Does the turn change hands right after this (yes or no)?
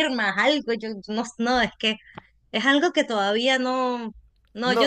yes